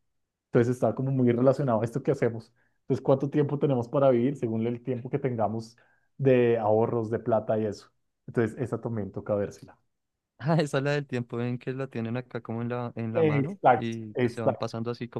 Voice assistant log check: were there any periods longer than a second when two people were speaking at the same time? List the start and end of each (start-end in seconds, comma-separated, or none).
13.1-14.6